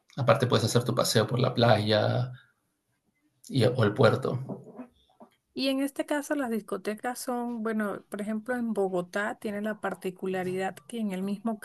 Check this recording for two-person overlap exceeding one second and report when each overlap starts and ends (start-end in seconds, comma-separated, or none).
none